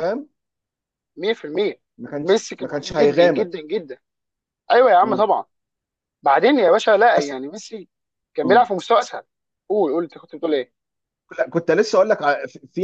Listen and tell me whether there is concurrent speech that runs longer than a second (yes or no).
yes